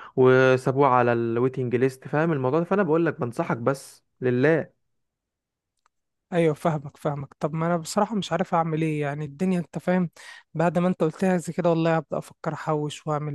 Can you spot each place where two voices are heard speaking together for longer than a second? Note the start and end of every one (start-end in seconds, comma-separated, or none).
none